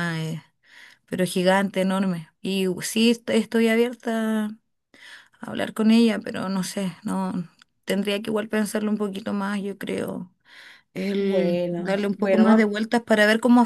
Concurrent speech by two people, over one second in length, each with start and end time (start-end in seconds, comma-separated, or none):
11.2-12.7